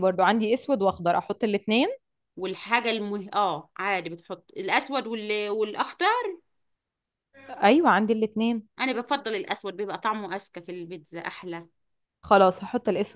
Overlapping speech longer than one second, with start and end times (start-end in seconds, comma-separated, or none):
none